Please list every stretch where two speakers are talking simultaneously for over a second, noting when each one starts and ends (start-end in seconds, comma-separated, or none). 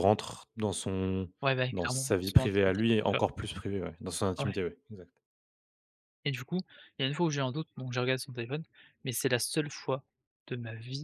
1.7-3.2